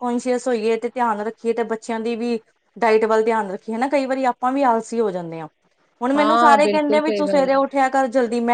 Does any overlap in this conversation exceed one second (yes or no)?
yes